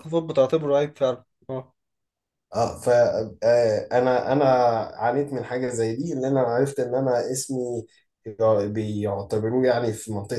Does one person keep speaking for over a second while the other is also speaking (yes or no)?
no